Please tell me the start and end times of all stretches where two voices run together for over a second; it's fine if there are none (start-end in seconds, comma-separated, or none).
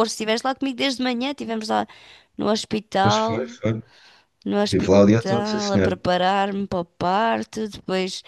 4.6-6.0